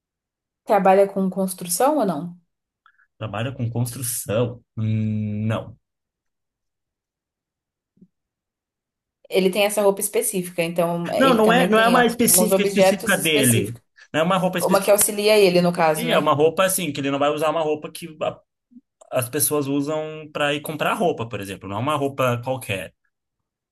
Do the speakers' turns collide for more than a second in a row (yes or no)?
yes